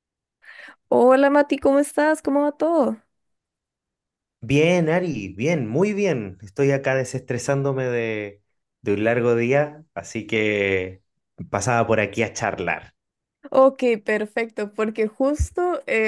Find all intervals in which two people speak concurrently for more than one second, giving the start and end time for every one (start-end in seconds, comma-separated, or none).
none